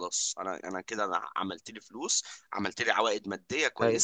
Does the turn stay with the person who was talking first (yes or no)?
no